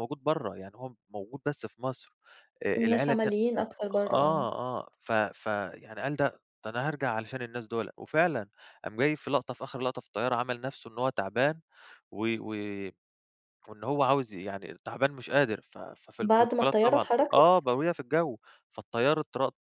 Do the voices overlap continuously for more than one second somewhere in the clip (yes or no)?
yes